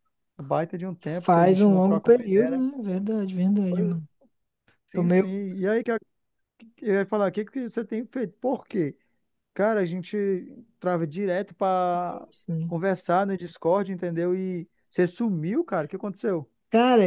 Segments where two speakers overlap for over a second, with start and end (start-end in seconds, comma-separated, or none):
1.2-2.6